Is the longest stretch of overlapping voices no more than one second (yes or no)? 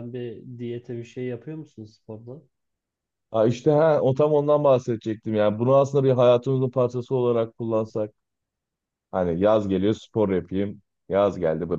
yes